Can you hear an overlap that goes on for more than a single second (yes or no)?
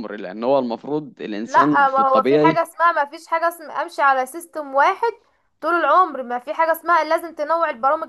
yes